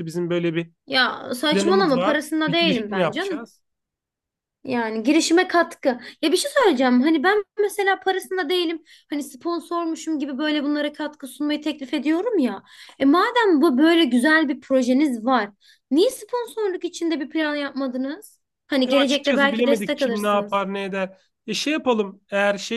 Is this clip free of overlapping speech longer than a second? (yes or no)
no